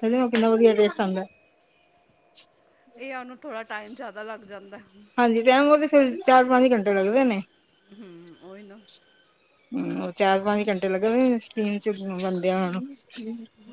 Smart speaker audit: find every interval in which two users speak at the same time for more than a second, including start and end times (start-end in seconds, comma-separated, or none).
none